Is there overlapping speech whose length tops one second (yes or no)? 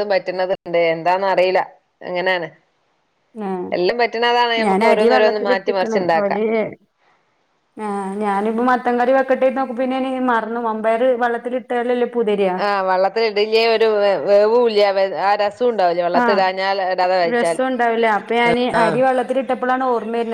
yes